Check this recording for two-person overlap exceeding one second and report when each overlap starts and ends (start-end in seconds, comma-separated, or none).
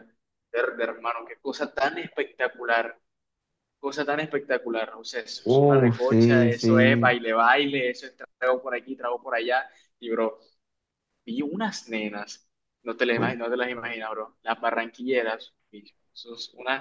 5.5-7.2